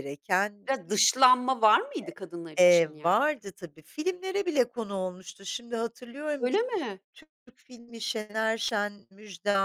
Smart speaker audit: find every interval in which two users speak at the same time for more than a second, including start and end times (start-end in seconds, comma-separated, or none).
none